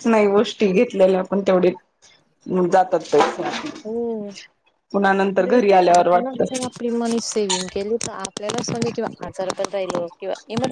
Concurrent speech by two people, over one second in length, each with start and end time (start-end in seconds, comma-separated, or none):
4.9-6.7